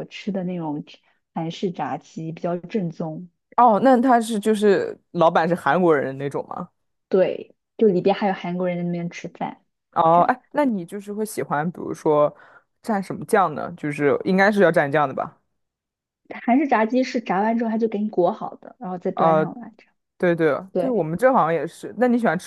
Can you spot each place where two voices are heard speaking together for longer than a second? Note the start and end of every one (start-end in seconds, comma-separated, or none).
none